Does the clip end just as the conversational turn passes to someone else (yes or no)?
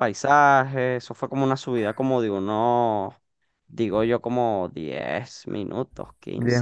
yes